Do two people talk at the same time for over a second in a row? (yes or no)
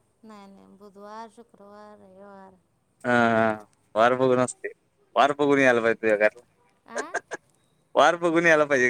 no